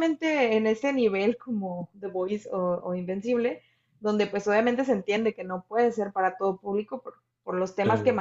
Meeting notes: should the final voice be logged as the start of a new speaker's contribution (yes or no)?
no